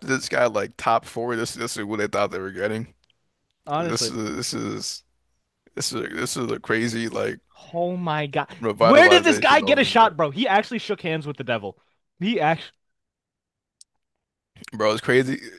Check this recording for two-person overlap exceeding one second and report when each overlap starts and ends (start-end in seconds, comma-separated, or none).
8.6-10.1